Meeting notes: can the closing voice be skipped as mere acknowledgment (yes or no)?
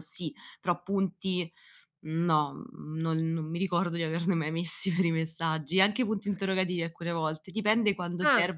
yes